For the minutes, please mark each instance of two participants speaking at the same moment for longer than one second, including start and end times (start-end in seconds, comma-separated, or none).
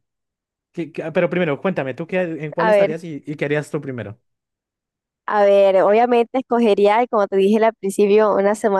none